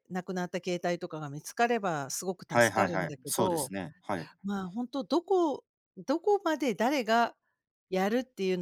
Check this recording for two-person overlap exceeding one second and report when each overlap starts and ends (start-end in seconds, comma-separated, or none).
2.5-3.7